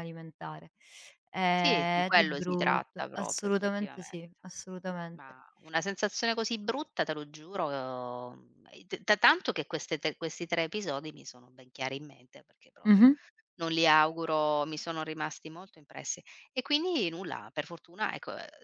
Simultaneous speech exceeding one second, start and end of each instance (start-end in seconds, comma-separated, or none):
1.5-4.1